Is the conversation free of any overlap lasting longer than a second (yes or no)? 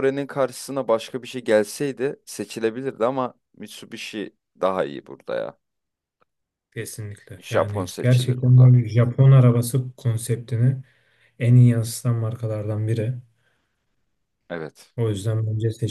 no